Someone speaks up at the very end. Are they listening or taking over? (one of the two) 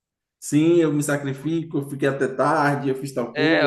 taking over